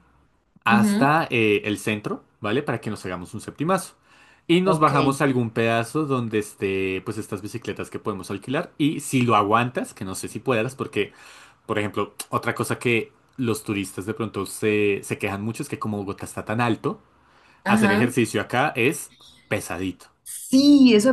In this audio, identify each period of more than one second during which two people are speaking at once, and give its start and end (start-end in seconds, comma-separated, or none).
none